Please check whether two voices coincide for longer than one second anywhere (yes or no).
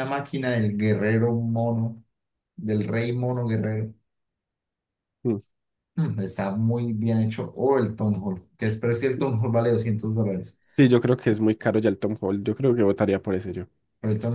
no